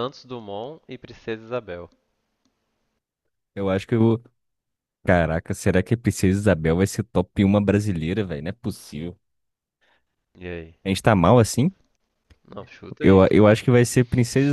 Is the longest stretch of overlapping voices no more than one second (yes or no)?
yes